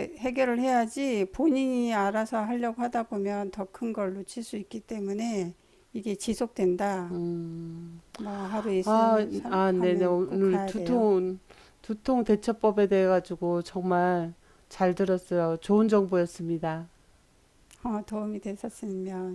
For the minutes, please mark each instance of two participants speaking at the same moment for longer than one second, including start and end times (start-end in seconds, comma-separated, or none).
8.8-11.1